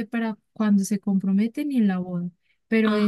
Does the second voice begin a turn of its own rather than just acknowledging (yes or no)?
no